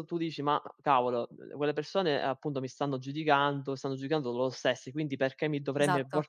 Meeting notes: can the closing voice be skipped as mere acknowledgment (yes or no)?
yes